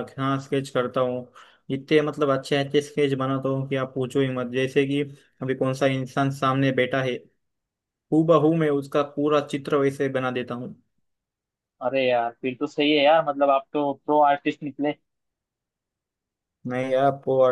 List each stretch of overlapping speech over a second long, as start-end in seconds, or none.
none